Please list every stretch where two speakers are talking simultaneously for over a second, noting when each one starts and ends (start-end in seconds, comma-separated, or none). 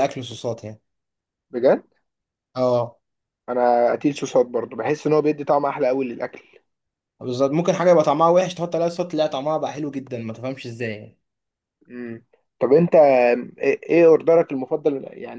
none